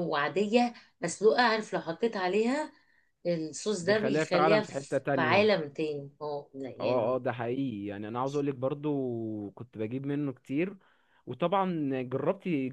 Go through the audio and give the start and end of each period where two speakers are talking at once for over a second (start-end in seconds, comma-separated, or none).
3.8-5.5